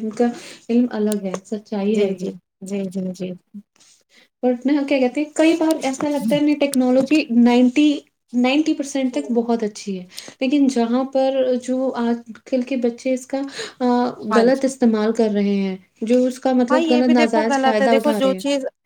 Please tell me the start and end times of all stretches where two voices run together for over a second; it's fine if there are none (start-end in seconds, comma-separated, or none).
16.7-18.2